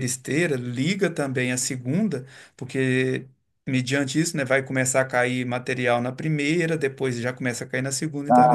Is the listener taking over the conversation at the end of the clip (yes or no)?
no